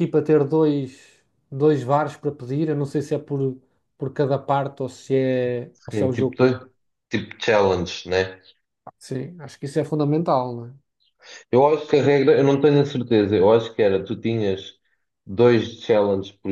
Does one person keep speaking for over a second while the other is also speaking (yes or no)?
no